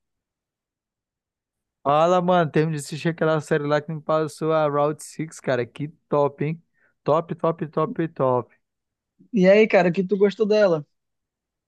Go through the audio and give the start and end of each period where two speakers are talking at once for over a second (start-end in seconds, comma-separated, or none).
none